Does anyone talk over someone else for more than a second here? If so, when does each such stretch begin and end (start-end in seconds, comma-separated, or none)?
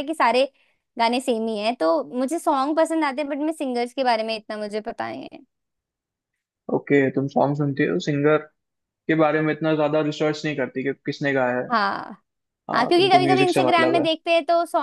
12.7-14.1